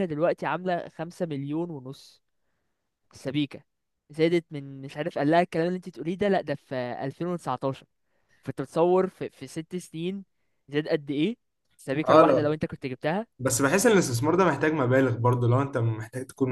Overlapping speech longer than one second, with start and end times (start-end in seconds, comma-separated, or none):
none